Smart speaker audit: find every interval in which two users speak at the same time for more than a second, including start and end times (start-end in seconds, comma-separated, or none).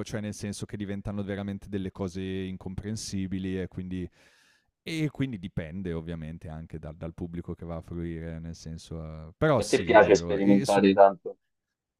9.6-10.8